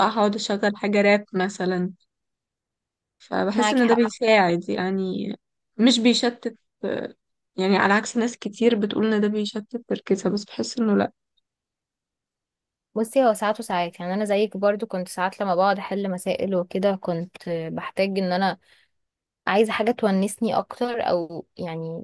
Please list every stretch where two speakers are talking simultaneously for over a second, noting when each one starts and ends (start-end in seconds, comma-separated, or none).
none